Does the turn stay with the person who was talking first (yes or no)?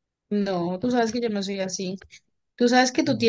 yes